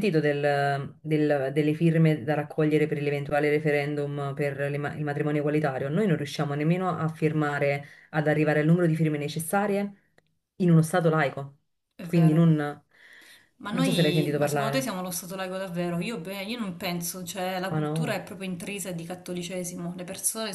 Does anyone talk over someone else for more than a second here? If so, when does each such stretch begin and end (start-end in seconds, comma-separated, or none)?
13.7-14.9